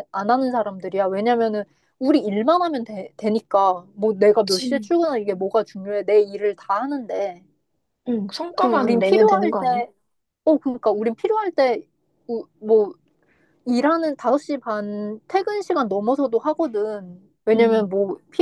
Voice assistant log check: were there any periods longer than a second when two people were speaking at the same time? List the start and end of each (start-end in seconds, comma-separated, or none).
8.6-9.8